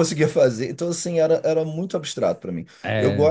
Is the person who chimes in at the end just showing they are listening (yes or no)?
yes